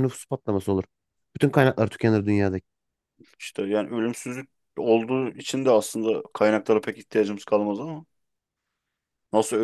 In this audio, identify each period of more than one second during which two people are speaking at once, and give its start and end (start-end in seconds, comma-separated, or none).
none